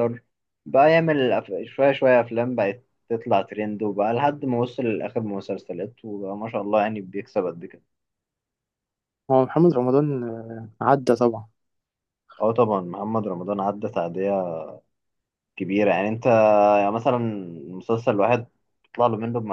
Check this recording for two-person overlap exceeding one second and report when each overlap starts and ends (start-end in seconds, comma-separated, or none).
none